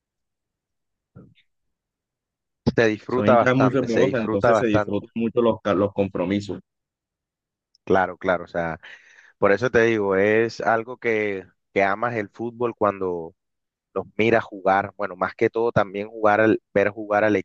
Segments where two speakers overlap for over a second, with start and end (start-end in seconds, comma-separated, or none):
3.1-5.0